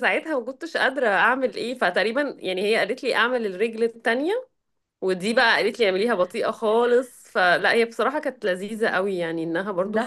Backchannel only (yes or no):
yes